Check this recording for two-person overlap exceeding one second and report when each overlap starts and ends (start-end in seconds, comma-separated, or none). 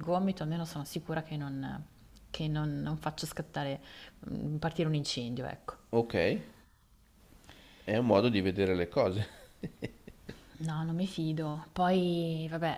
none